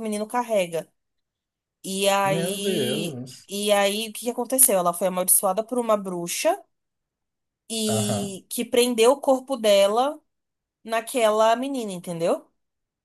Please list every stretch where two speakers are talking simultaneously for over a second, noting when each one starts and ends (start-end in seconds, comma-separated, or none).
2.2-3.5